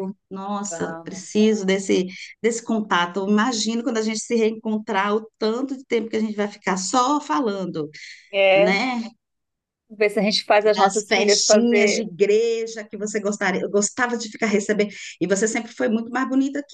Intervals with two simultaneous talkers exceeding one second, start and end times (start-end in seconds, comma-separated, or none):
10.7-12.1